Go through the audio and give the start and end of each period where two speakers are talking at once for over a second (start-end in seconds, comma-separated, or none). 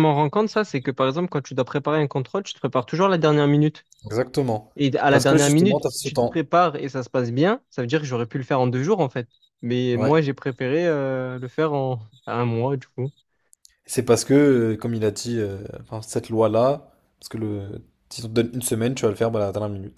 5.1-6.5